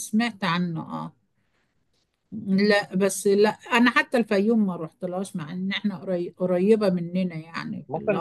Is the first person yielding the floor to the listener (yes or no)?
yes